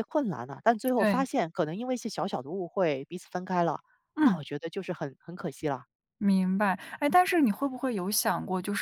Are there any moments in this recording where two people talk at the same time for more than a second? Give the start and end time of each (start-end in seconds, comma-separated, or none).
none